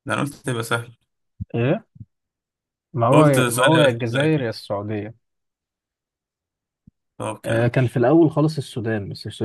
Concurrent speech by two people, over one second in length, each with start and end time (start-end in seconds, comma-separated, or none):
3.1-4.5